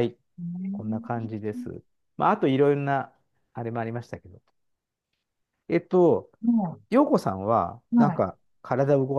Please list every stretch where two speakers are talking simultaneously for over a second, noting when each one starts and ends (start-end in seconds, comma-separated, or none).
none